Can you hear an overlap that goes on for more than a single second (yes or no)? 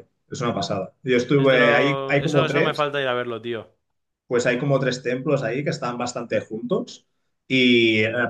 yes